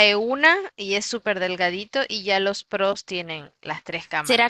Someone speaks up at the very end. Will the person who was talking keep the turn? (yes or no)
no